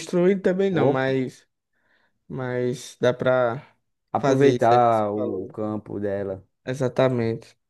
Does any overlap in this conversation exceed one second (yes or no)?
yes